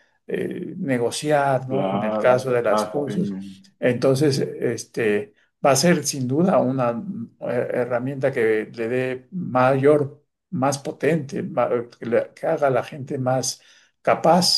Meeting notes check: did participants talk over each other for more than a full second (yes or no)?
yes